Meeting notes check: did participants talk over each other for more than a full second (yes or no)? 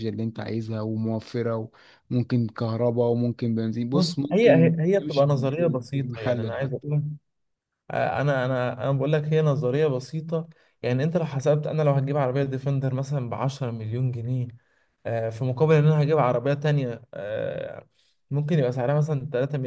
yes